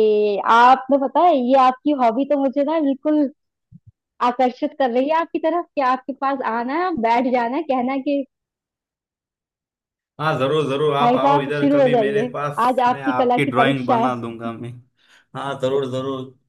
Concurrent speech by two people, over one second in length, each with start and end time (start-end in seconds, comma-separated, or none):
11.0-14.1